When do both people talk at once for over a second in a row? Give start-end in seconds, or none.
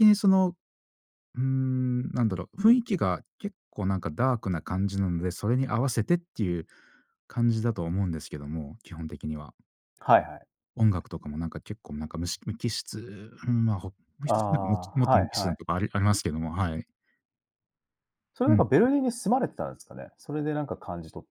14.3-15.6